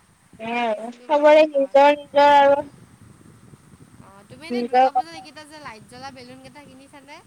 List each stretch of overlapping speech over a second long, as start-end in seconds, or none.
0.6-2.1